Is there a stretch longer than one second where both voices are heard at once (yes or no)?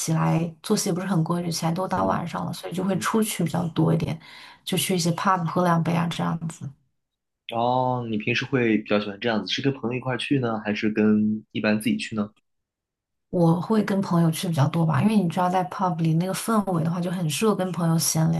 no